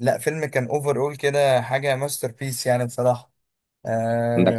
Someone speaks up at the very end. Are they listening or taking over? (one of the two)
taking over